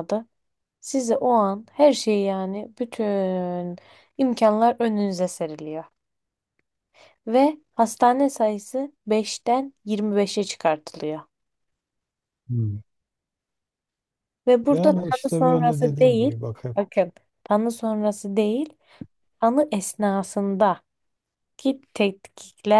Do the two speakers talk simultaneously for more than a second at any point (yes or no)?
yes